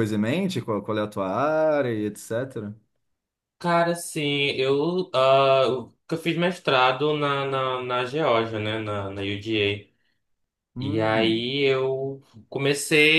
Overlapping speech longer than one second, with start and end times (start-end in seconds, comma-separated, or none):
none